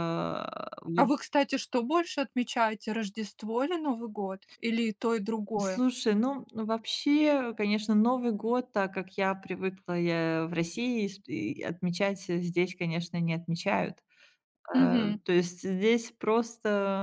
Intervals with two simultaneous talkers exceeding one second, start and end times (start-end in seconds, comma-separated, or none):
none